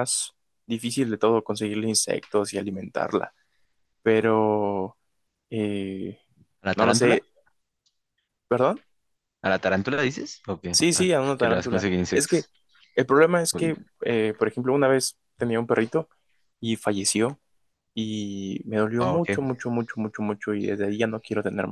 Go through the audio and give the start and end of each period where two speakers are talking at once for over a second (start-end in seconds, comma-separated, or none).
10.7-12.5